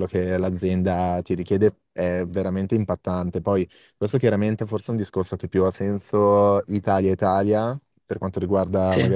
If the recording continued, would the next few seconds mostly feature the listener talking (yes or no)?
no